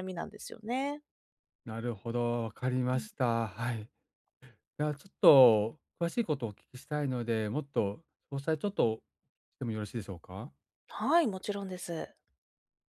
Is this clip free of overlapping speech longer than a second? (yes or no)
yes